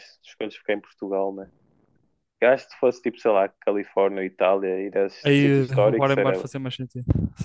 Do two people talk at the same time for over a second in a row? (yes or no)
yes